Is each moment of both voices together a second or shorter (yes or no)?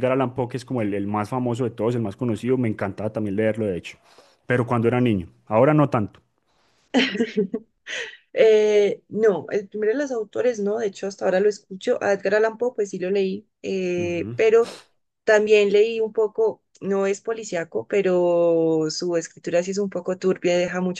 yes